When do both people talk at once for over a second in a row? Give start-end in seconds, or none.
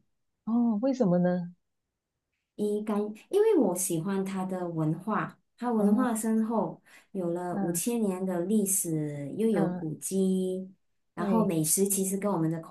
none